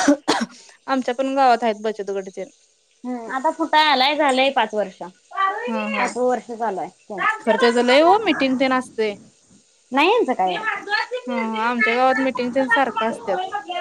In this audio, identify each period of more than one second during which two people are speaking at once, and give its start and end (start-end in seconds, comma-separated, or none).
none